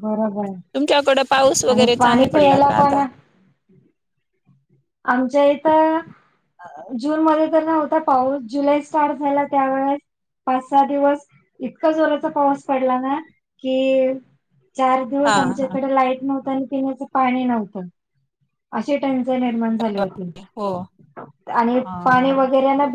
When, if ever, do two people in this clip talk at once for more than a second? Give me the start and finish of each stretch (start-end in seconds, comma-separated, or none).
0.8-3.0